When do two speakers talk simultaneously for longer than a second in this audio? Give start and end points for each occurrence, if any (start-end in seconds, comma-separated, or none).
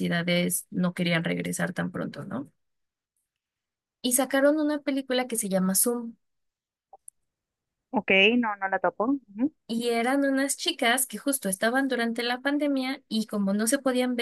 none